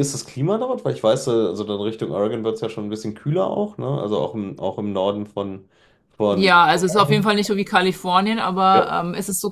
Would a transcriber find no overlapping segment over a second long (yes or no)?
yes